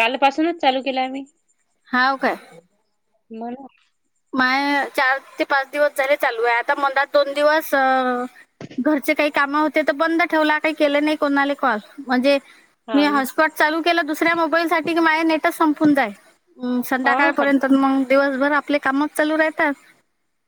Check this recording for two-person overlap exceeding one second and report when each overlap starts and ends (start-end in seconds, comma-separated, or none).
none